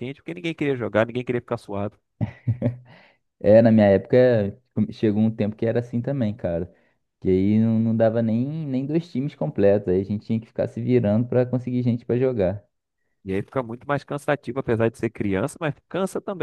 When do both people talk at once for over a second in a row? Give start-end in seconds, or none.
none